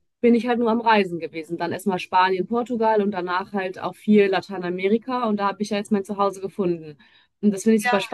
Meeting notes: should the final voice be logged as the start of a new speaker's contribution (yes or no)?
no